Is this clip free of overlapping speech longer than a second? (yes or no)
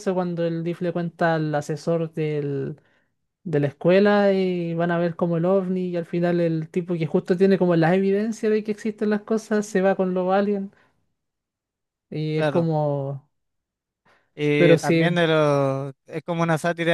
yes